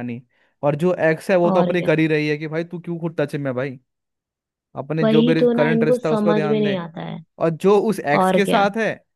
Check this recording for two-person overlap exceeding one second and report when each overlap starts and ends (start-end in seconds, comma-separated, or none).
5.0-6.8